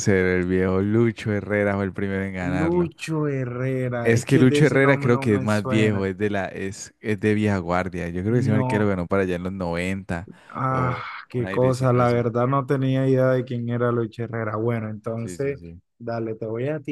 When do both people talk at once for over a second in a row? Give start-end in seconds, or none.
4.0-6.1, 10.7-12.3